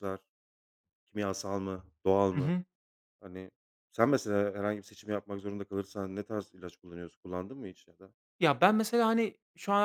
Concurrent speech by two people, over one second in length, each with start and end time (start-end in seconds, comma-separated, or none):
none